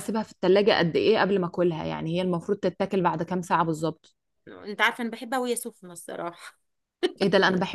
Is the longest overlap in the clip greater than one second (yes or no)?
no